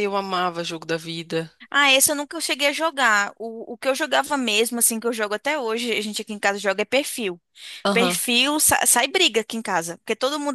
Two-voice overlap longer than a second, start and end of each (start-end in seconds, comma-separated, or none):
none